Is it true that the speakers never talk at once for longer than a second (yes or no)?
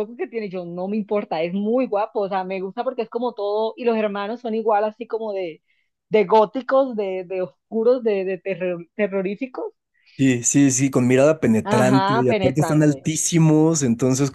no